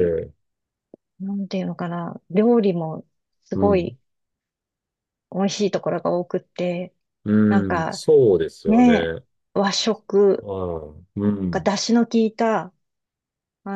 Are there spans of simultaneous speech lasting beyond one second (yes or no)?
no